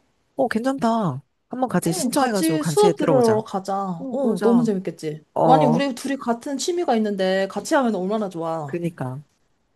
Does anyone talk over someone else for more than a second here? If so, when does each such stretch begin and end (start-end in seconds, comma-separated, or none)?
1.9-3.5